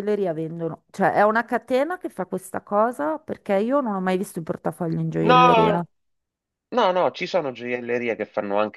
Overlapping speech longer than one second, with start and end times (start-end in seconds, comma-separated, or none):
none